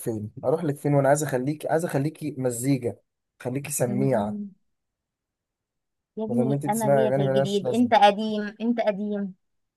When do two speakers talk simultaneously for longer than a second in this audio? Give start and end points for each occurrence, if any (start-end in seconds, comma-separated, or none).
6.3-7.9